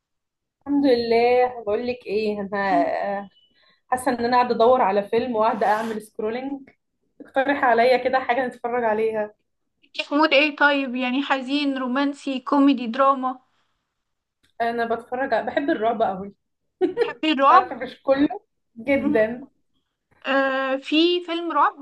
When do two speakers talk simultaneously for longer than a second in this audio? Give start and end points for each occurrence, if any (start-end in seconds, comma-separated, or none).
none